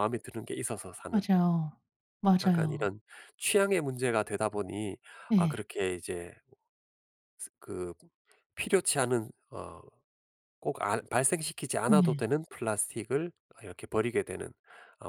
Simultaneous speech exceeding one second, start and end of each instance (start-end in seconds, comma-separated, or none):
none